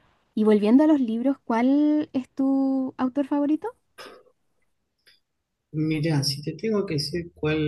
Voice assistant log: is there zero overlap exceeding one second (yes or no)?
yes